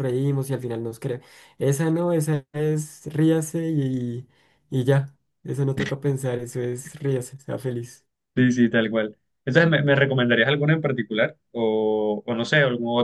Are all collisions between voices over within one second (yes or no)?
yes